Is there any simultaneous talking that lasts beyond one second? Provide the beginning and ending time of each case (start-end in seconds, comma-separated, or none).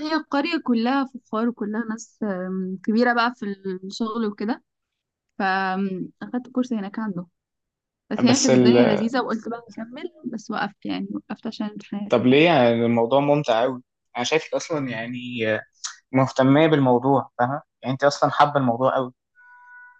none